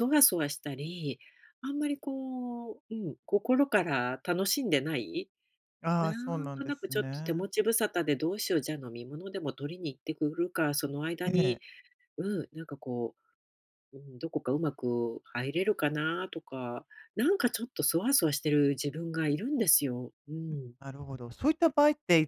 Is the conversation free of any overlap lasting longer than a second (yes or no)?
no